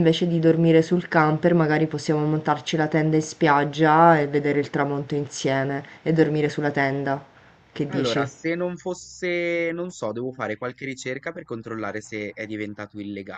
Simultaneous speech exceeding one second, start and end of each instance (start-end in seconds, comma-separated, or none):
none